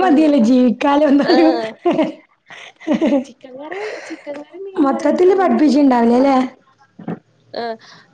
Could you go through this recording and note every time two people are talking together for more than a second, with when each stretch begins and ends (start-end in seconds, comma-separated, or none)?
4.8-6.3